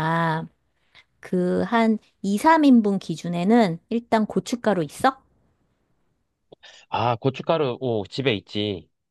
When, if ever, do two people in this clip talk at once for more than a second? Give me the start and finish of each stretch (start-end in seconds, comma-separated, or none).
none